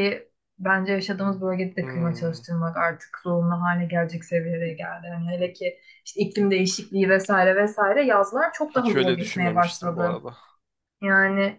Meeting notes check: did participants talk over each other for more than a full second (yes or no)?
yes